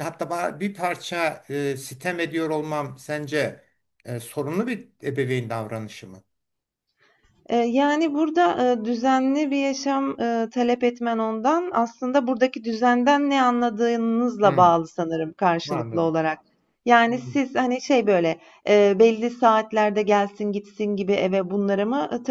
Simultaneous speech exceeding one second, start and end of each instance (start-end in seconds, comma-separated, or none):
none